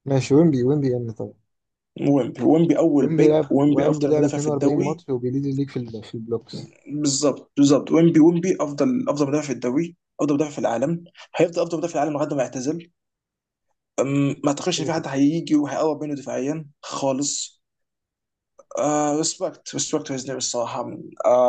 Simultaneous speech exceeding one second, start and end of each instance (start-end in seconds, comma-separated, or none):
3.0-5.0